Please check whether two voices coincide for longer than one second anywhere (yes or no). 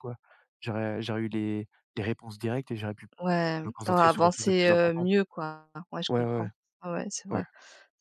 yes